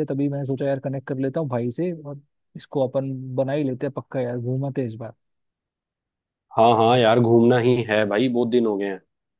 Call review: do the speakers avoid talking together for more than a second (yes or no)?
yes